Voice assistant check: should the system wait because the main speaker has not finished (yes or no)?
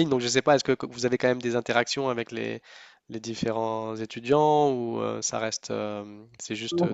yes